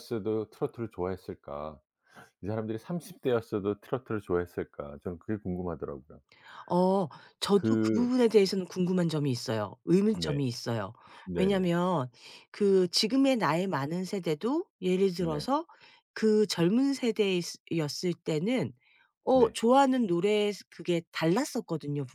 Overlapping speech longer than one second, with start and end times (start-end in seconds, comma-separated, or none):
none